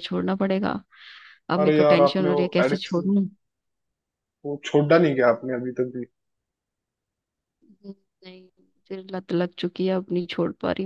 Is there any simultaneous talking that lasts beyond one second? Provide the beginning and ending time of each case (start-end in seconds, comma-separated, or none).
1.6-3.1